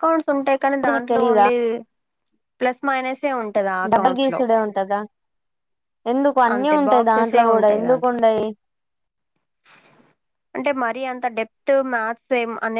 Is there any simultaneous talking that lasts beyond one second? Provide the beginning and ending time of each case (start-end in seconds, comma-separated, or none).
6.5-8.2